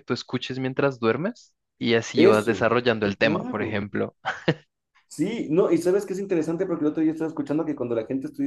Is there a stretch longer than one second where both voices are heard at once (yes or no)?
yes